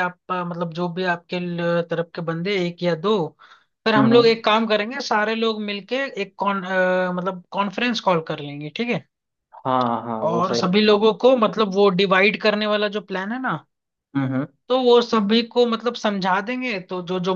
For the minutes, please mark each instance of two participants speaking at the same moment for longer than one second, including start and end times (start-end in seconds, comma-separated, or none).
none